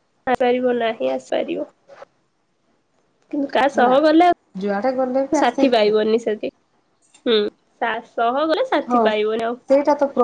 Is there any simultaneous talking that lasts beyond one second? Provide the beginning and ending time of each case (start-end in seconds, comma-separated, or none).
4.6-5.9